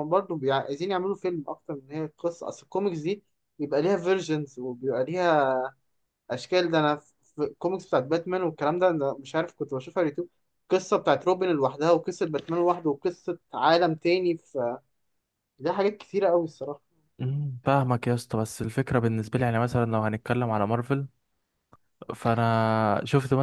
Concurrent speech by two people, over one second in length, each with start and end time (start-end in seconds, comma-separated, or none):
none